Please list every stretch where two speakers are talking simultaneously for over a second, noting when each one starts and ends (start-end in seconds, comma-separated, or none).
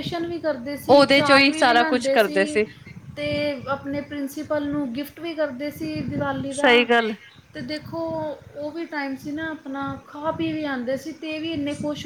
0.9-2.4